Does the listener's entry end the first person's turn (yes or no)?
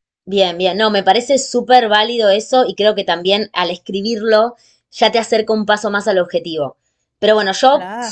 no